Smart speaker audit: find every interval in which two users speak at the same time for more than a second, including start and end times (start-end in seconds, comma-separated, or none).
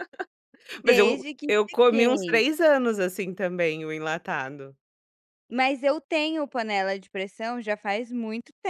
0.8-2.4